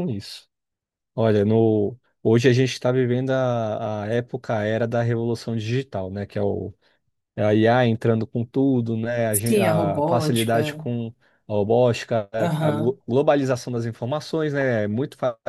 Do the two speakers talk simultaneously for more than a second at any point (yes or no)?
yes